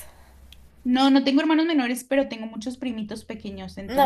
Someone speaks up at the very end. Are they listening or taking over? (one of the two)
taking over